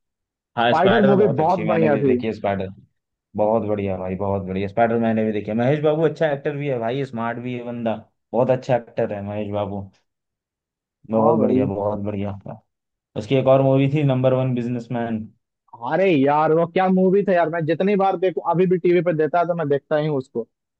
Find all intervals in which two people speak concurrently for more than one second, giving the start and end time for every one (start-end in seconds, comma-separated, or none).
0.6-2.1